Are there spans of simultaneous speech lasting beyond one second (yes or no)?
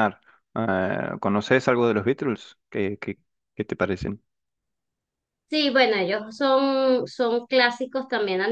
no